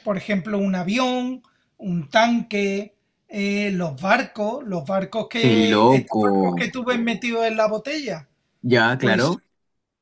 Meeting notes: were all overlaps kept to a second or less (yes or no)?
no